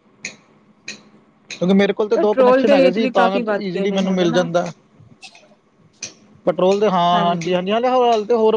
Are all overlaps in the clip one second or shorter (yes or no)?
no